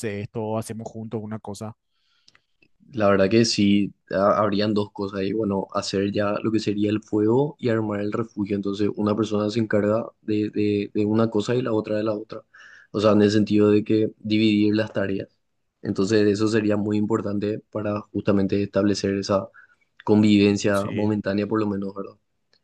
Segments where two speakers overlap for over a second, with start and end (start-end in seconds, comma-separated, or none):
none